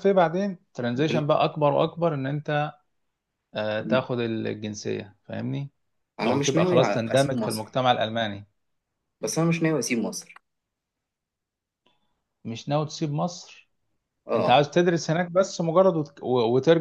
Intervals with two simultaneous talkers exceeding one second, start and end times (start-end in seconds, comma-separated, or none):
6.3-7.7